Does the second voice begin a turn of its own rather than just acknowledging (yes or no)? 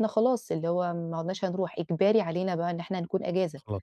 no